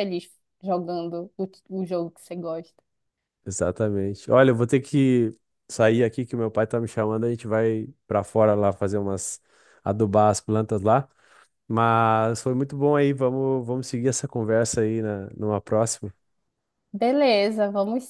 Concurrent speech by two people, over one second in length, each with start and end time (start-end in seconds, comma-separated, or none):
none